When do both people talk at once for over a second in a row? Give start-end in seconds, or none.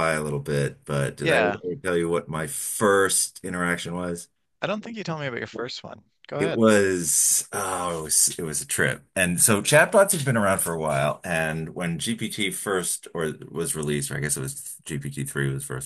none